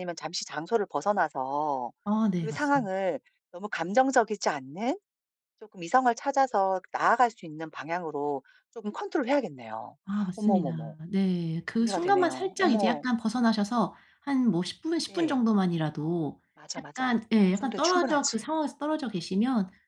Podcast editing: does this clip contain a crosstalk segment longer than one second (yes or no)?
yes